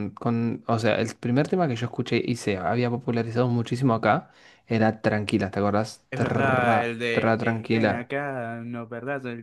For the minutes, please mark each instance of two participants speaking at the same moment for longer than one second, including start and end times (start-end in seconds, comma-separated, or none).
6.1-8.1